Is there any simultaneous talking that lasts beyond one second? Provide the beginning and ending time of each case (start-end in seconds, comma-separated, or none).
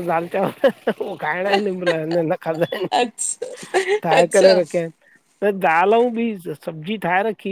none